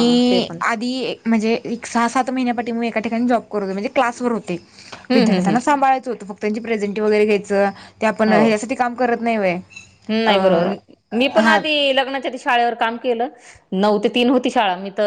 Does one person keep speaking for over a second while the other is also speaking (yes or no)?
no